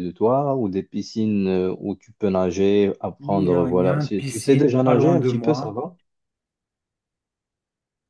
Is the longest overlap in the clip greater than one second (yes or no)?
yes